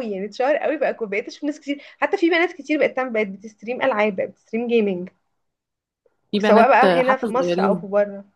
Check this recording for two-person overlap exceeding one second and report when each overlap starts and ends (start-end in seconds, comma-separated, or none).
6.4-7.9